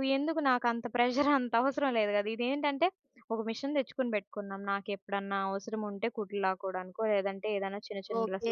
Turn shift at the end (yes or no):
yes